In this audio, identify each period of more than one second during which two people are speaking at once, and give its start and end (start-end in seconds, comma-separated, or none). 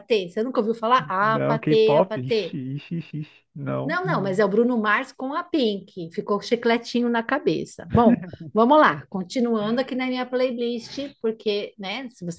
1.2-2.4